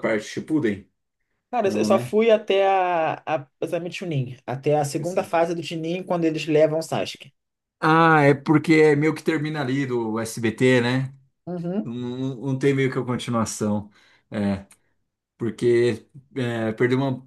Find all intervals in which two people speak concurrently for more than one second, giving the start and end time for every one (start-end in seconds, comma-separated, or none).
none